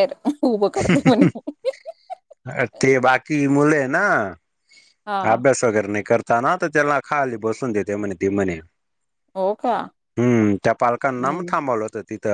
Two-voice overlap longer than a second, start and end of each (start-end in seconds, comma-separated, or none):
none